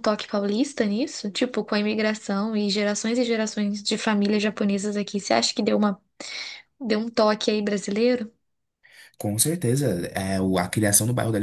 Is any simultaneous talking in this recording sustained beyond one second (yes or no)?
no